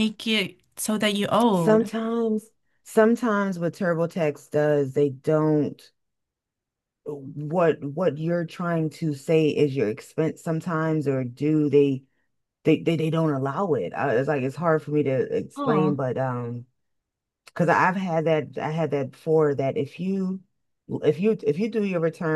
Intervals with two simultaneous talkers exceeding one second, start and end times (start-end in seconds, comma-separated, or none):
none